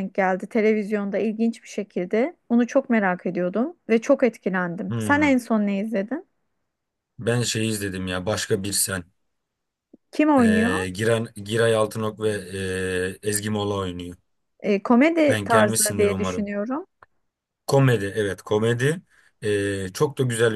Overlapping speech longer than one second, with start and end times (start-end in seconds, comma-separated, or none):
15.3-16.5